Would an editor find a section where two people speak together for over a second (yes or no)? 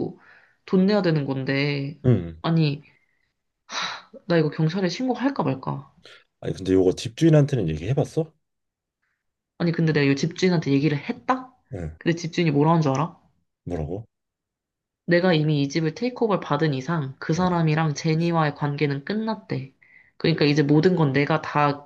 no